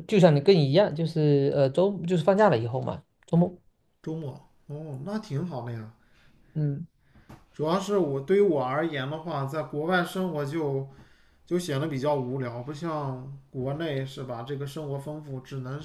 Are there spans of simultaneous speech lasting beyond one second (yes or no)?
no